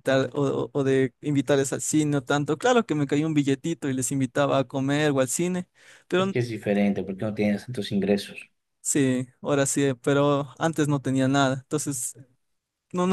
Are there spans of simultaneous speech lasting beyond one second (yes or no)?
no